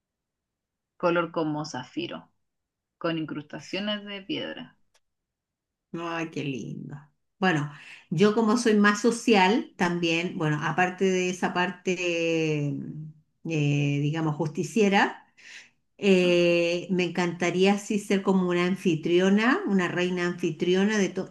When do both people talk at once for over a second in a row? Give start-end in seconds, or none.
none